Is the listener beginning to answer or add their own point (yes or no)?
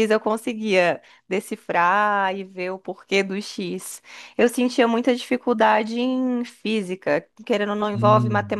no